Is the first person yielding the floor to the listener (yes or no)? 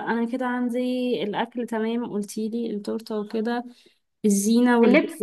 no